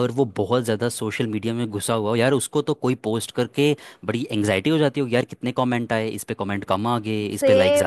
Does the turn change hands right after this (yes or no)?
yes